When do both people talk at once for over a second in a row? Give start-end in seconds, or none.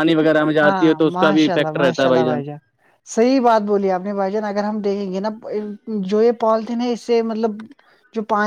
0.6-2.2